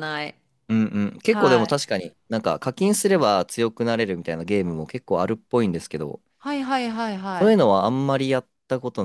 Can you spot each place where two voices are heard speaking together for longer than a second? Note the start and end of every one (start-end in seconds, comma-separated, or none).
none